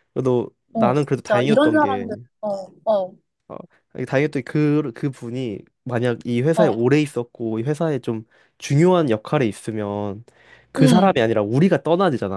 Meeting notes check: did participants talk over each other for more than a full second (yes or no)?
yes